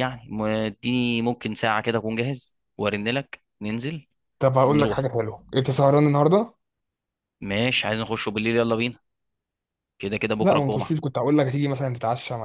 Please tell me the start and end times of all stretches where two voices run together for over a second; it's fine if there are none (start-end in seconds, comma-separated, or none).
none